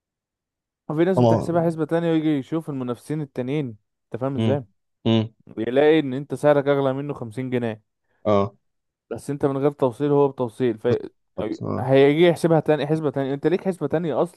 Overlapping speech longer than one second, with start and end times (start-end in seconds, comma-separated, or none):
none